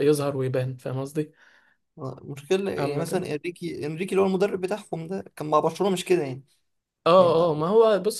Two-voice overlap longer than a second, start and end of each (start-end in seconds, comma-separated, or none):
none